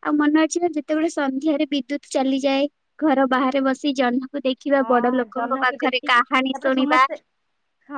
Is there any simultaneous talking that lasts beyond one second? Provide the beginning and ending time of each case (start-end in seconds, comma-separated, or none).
4.8-7.0